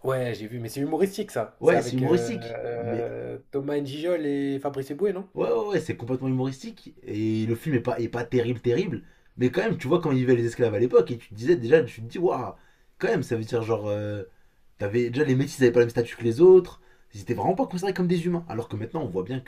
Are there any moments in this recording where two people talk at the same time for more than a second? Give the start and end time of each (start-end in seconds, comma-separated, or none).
1.6-3.0